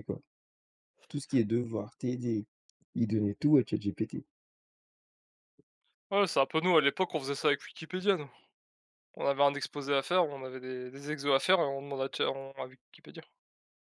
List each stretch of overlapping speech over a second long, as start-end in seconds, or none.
none